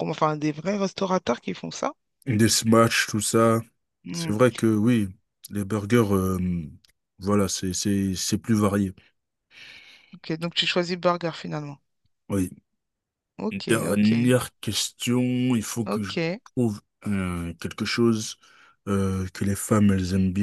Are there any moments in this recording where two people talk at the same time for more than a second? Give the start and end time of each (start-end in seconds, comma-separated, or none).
none